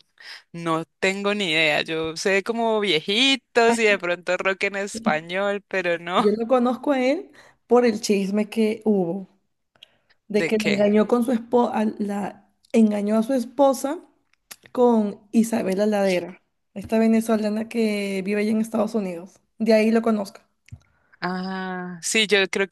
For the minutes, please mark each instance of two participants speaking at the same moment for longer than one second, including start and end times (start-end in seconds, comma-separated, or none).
none